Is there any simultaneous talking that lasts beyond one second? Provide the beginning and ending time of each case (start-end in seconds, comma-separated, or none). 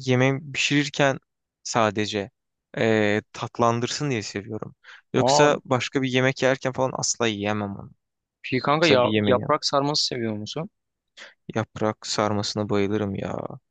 none